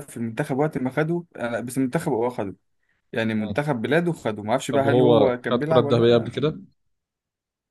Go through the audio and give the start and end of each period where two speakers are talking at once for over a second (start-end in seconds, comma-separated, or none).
4.7-6.6